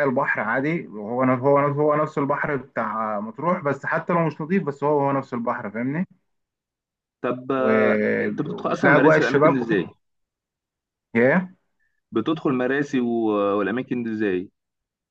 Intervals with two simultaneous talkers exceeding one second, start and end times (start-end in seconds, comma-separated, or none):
7.6-9.9